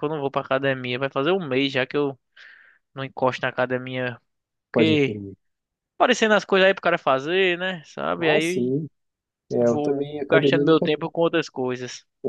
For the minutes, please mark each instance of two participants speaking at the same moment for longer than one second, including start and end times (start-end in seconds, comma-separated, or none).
9.6-10.9